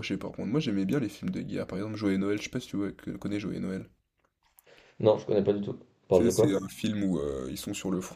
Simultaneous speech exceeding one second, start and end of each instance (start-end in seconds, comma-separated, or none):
none